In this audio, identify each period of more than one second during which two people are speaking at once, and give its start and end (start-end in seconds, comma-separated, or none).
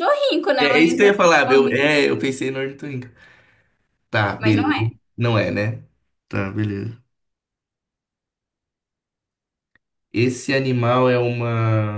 0.6-2.0